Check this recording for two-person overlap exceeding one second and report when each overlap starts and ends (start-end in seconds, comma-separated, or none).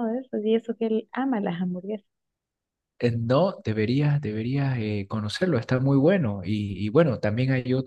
none